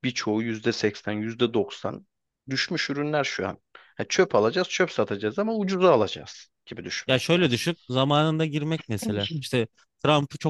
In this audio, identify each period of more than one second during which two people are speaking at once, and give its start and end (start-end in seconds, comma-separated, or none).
none